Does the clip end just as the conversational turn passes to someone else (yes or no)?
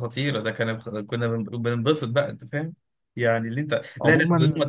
no